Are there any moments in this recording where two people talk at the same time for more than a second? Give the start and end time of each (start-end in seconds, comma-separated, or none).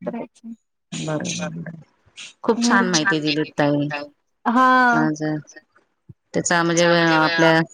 2.6-3.9